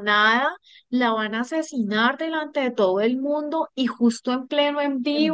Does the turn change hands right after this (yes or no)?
no